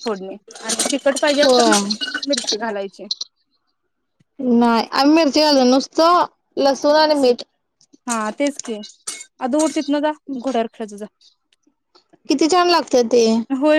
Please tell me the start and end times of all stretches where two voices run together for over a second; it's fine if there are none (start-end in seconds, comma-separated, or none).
none